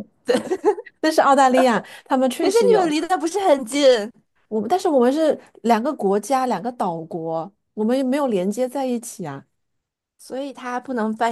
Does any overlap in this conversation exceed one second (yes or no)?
no